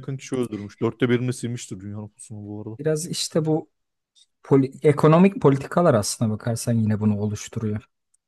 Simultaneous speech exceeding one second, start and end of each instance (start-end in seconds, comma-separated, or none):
none